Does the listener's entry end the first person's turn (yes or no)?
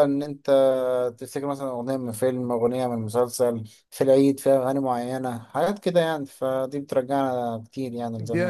yes